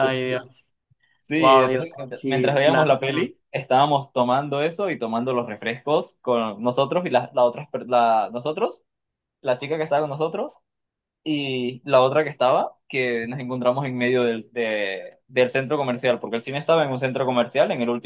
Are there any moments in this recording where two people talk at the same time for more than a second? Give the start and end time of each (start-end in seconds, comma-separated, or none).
1.4-3.3